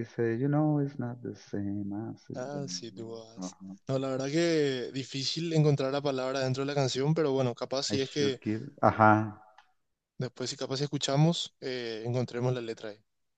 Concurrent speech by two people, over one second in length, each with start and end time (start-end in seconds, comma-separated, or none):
2.3-3.8